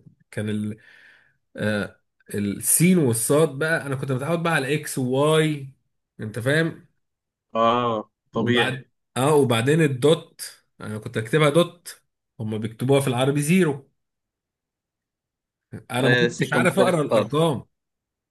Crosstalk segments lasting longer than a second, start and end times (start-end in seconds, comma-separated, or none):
16.0-17.5